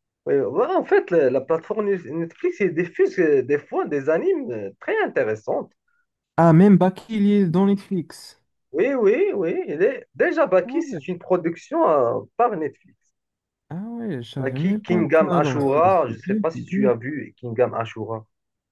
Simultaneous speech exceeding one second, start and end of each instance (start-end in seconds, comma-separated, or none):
14.4-16.9